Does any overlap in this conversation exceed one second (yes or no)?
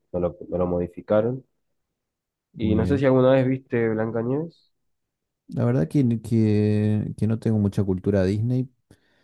no